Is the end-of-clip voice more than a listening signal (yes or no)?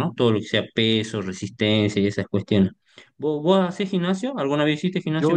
yes